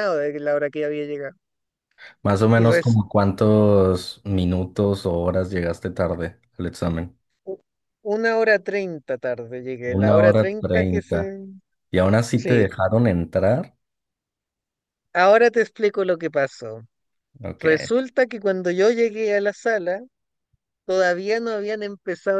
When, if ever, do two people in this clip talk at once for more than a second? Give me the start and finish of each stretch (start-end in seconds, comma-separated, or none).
10.0-11.3